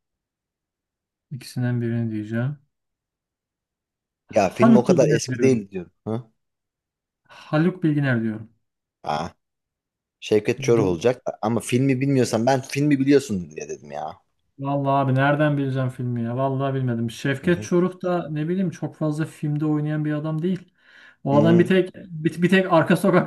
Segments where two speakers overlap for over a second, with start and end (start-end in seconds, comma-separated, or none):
4.3-5.7